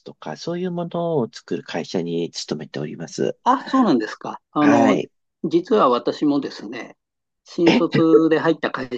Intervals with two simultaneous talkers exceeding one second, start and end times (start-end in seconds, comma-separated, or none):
none